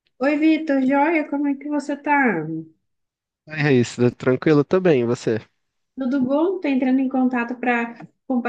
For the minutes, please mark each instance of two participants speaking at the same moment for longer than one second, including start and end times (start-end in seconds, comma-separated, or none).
none